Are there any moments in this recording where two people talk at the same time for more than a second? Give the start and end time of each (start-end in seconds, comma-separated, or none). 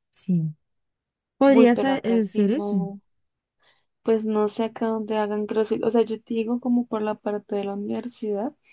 1.4-2.8